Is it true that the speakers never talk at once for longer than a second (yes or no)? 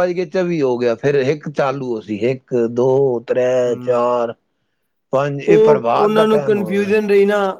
no